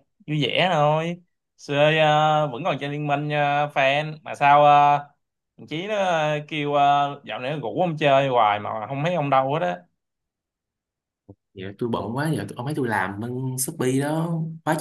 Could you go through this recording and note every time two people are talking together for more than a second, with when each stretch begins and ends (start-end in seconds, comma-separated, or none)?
none